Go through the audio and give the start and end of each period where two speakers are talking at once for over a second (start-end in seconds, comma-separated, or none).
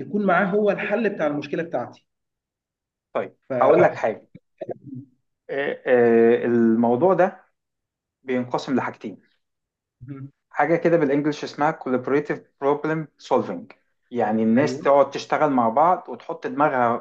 none